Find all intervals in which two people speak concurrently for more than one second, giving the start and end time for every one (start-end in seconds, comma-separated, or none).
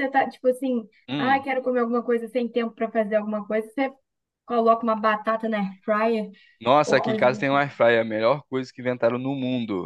none